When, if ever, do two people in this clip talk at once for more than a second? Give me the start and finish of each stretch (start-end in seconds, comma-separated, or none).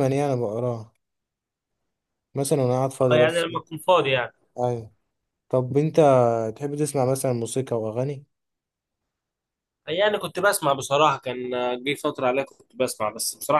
none